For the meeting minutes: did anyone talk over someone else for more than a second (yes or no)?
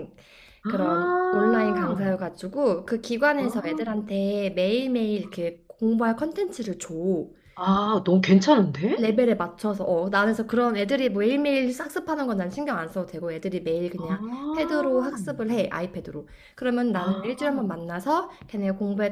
yes